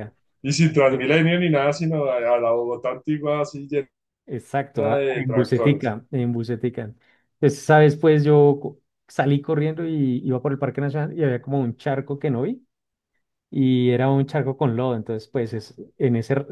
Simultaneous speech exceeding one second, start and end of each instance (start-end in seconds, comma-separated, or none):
4.4-5.9